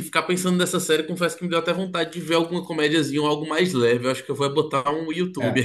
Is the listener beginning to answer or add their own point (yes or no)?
yes